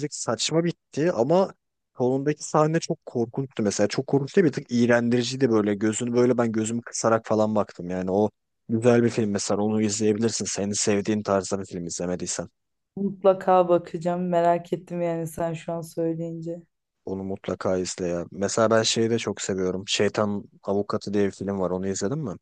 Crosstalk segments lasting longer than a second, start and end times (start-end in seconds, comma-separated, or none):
none